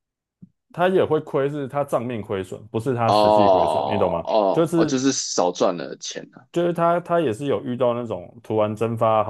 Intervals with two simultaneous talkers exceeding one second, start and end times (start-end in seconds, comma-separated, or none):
3.1-5.0